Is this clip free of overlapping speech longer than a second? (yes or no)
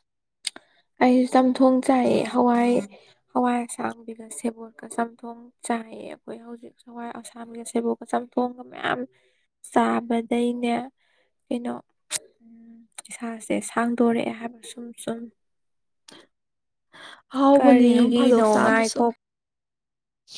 no